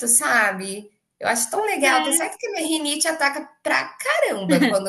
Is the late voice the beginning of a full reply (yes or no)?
no